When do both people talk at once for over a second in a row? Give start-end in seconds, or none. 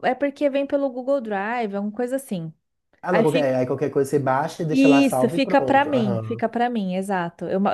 4.7-6.5